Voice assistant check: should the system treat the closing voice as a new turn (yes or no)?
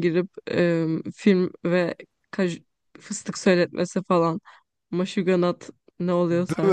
yes